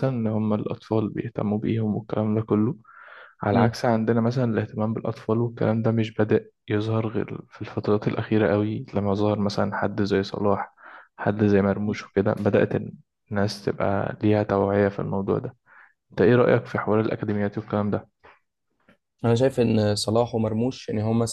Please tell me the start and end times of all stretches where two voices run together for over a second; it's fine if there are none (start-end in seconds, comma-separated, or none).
none